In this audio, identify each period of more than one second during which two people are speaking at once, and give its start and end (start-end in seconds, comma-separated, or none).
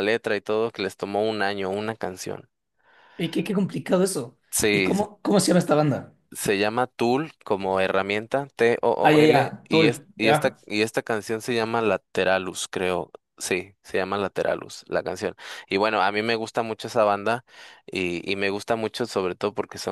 9.0-10.6